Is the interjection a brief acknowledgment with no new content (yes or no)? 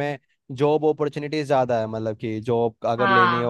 yes